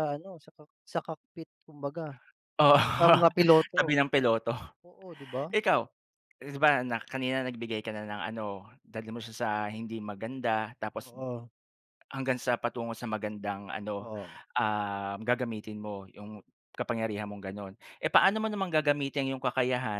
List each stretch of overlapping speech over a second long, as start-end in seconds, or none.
none